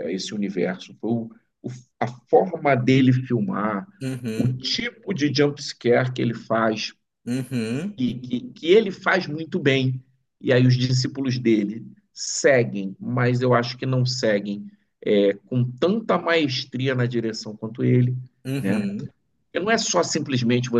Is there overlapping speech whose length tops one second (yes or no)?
no